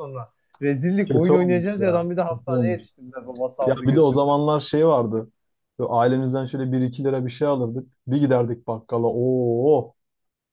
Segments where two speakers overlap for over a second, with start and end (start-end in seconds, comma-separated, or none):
1.1-2.8